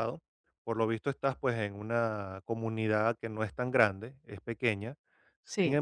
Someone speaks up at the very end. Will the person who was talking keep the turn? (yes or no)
yes